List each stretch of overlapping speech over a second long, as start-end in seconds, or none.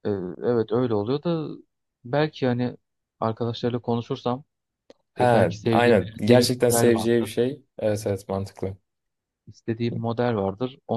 5.2-7.3